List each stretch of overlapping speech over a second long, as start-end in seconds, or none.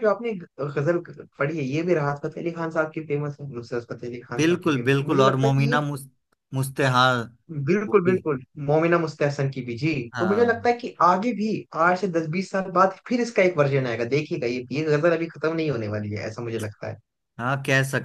4.4-5.8